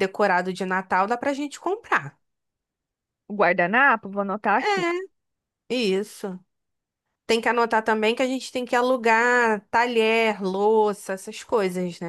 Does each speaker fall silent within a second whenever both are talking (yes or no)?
yes